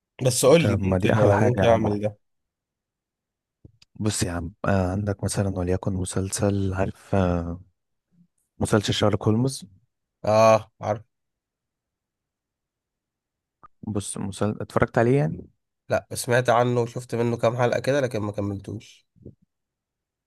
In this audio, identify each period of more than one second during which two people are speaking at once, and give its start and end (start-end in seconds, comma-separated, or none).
0.6-2.0